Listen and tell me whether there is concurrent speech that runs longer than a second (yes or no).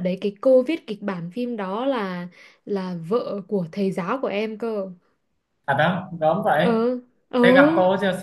no